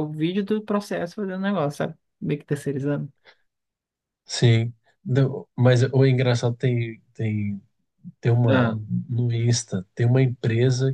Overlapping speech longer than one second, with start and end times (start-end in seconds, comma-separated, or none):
none